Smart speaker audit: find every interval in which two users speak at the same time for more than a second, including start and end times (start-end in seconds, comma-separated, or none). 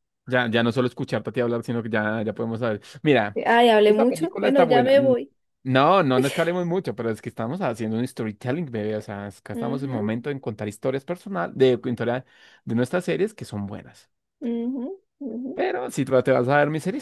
3.8-5.2